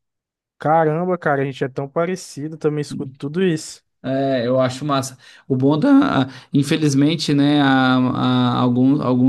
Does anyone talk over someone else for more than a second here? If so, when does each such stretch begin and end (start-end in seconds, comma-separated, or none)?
none